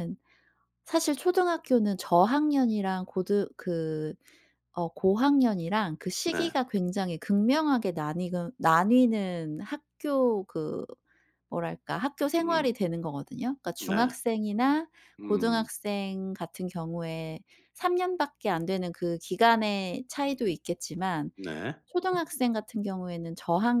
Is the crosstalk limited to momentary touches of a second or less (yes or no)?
yes